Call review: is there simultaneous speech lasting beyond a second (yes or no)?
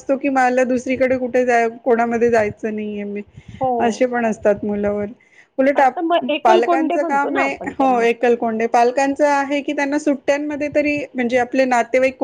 yes